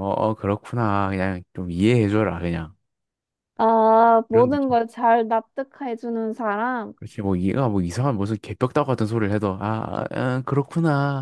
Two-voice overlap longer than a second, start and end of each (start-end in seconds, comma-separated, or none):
none